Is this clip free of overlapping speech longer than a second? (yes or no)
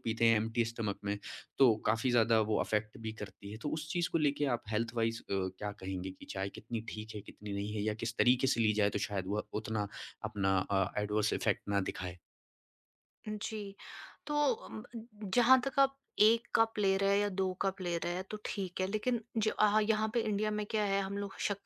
yes